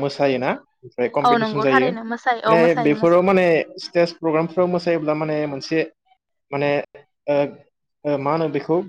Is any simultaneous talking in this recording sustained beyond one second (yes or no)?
yes